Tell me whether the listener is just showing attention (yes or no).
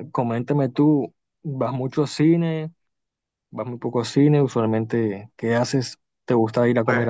yes